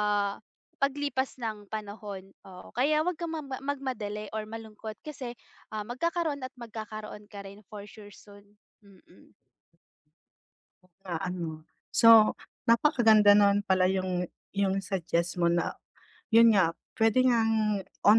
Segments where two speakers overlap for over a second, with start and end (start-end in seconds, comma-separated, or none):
none